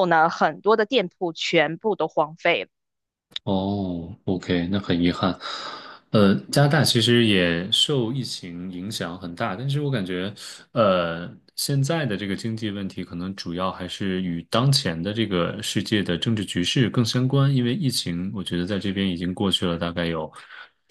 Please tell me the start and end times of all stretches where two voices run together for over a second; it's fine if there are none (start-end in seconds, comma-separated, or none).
none